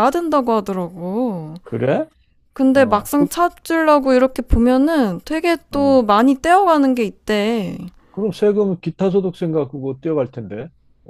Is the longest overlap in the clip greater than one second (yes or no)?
no